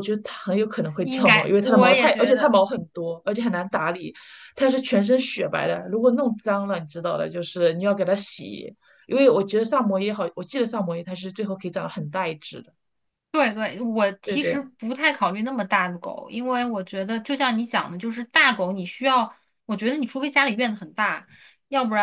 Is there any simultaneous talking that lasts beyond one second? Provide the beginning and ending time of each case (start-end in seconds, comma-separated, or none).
1.0-2.6